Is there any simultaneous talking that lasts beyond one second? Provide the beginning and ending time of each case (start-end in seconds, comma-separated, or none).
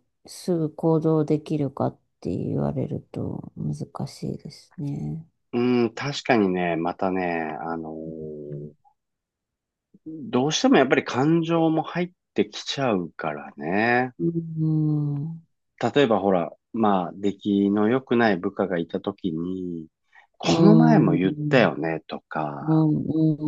20.4-21.8